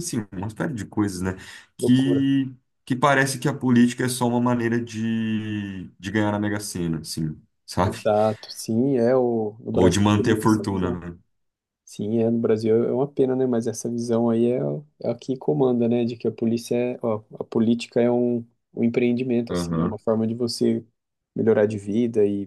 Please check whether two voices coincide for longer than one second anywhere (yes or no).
yes